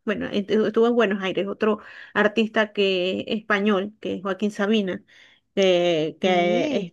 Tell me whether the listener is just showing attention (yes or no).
yes